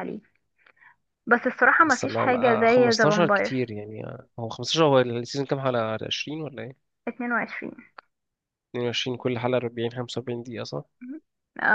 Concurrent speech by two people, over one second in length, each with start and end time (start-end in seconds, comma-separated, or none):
1.8-3.6